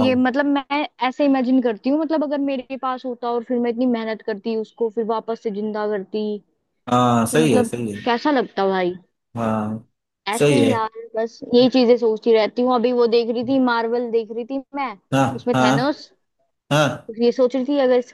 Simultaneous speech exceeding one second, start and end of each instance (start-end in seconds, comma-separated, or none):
none